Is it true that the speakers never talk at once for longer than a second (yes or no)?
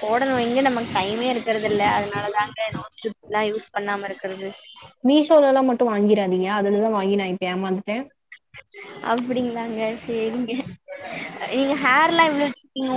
yes